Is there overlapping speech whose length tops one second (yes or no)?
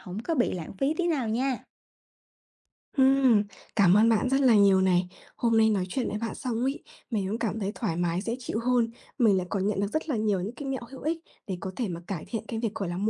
no